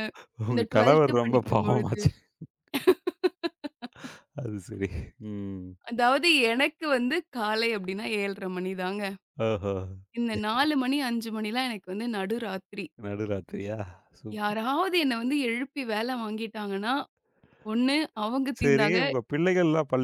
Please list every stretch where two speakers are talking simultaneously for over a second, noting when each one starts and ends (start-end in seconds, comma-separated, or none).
0.5-2.0